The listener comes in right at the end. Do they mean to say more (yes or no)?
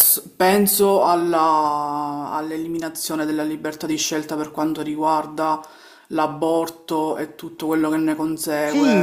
yes